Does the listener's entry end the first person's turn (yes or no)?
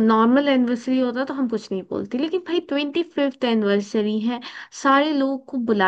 no